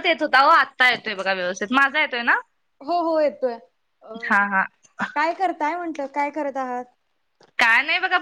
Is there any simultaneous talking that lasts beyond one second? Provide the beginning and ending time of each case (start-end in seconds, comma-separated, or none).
none